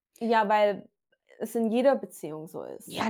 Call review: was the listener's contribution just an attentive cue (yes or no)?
no